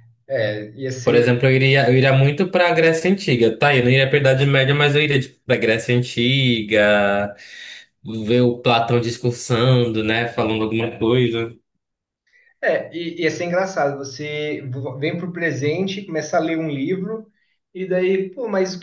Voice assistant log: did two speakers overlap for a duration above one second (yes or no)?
no